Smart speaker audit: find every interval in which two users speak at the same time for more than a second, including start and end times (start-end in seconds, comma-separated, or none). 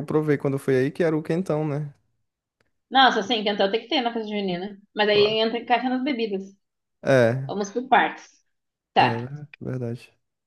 none